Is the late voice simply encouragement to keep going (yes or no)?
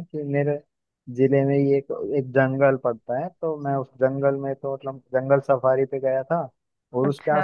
yes